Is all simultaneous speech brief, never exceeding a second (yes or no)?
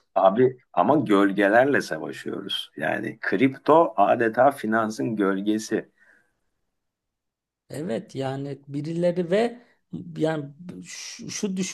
yes